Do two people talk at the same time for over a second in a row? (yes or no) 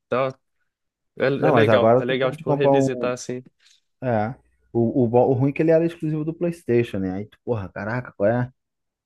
yes